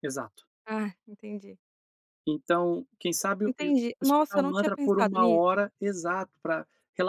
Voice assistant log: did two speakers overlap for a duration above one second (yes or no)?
yes